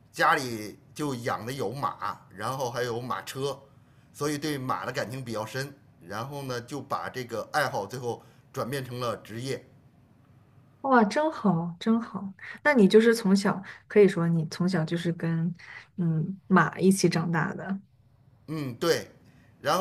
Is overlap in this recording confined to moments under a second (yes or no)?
yes